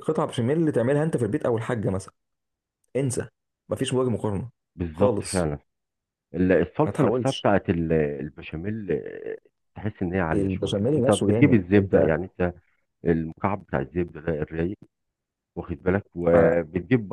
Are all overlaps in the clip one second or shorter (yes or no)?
no